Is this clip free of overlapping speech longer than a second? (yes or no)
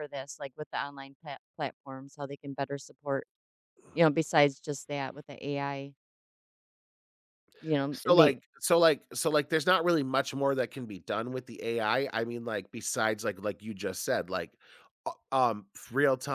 yes